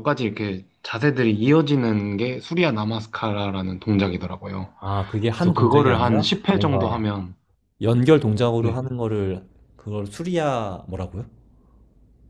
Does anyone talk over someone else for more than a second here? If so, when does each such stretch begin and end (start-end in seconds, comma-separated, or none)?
5.4-7.0